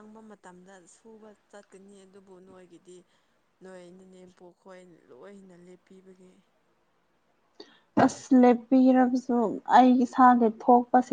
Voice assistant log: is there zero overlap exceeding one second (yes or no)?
yes